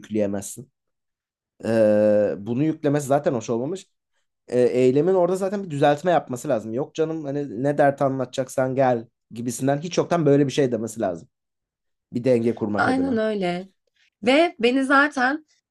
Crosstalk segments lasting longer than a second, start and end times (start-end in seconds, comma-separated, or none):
none